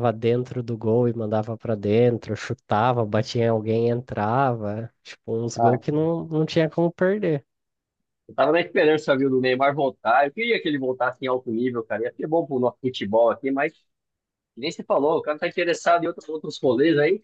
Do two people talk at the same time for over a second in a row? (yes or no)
no